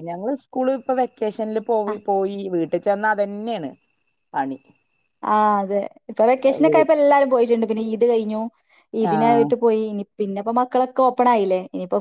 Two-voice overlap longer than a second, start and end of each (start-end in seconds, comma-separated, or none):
none